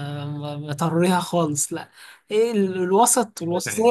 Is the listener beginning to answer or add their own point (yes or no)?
no